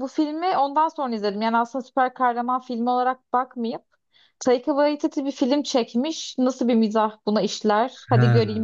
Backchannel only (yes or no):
yes